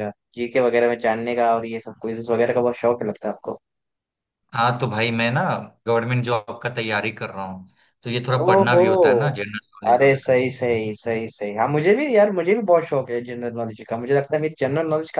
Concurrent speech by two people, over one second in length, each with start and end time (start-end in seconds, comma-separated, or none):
none